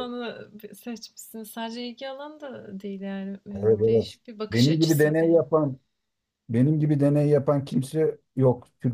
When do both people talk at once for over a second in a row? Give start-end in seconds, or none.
3.5-5.5